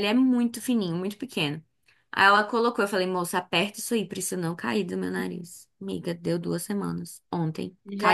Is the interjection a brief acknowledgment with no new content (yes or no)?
no